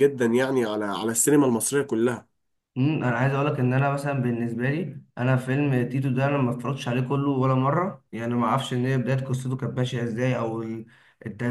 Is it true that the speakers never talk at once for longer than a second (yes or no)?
yes